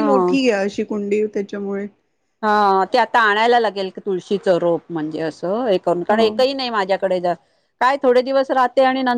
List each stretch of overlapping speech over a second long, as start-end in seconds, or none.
none